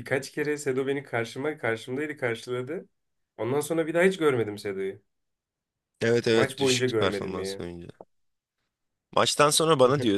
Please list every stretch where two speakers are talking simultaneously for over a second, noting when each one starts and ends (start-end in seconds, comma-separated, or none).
6.3-7.6